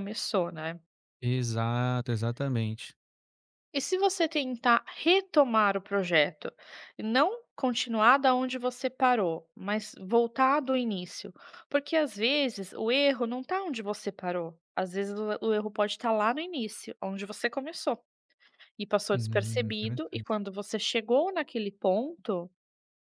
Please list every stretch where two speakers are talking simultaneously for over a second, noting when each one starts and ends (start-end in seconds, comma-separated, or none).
19.1-20.3